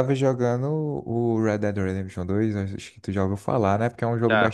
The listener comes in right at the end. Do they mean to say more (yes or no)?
no